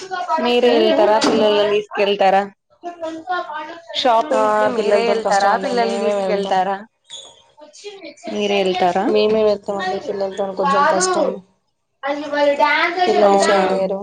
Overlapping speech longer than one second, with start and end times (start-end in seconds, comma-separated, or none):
4.4-6.5